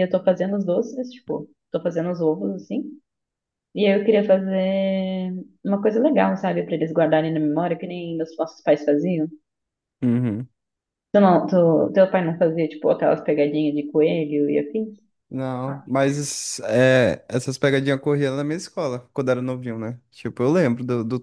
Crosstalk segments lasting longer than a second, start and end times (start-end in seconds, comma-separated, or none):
none